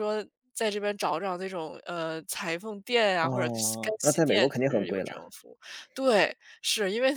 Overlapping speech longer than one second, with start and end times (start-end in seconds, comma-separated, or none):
3.2-5.2